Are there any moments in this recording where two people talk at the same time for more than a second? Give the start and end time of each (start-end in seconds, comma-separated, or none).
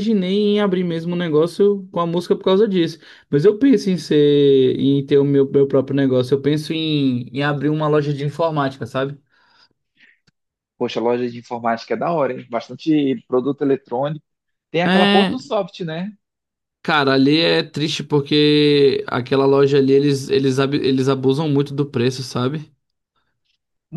none